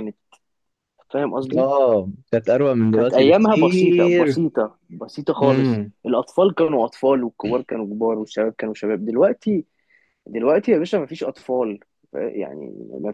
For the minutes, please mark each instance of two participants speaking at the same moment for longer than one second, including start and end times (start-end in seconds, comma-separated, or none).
2.9-4.4